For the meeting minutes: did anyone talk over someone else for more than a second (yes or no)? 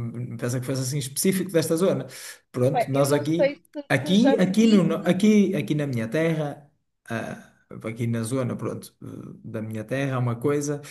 yes